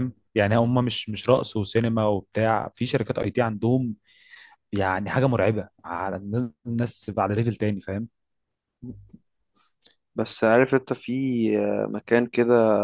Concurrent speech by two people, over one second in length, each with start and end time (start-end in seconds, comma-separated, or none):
none